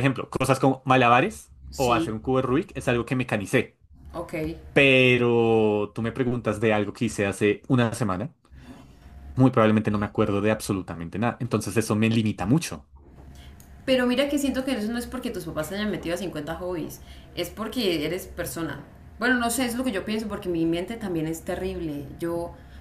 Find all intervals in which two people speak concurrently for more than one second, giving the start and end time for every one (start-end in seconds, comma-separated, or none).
none